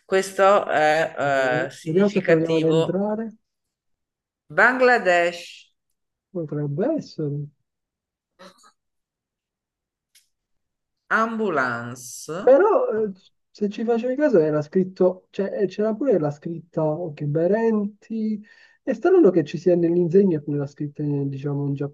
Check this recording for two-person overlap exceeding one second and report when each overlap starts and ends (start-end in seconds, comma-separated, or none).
1.2-3.0